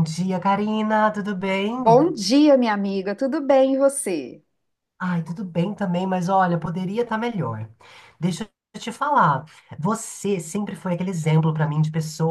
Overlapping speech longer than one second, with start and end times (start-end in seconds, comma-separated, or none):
none